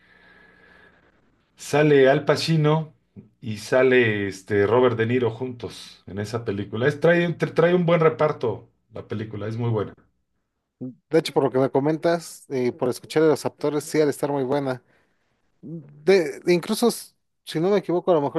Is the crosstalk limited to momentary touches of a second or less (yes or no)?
yes